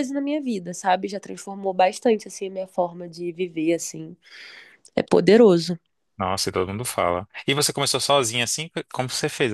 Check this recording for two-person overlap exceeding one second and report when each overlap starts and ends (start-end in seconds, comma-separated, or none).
none